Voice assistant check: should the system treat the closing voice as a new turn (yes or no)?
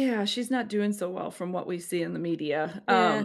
no